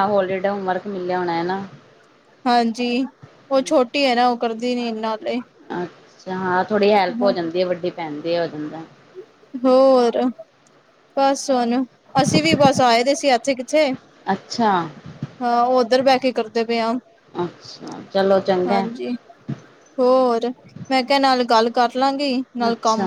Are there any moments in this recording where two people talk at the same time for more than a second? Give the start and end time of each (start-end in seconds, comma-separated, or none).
none